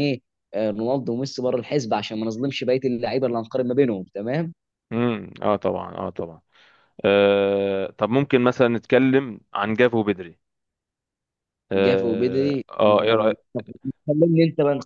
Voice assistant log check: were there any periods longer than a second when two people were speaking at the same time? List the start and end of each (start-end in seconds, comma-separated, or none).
11.8-13.3